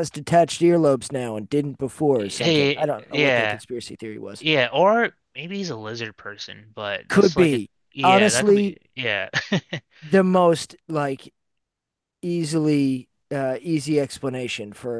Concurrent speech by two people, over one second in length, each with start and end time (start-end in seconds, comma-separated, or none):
2.1-3.6, 7.1-8.8